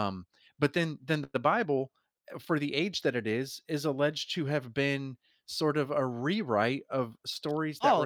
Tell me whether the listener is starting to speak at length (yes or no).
yes